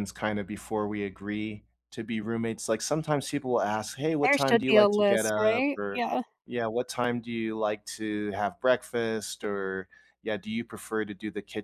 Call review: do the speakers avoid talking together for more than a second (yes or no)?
no